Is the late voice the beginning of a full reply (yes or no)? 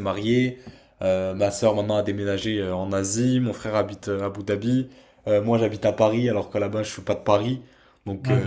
no